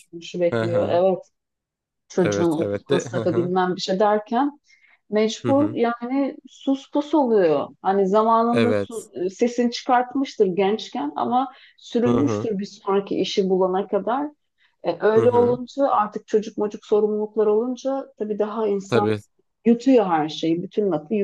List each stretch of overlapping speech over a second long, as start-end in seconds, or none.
2.2-3.5